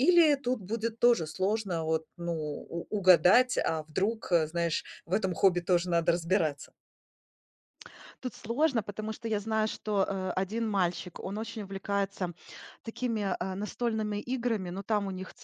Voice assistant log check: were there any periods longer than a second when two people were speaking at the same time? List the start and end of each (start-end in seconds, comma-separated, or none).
none